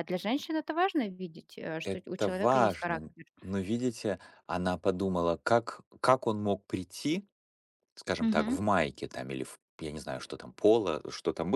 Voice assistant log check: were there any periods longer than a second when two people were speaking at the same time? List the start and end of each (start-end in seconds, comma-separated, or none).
1.8-3.2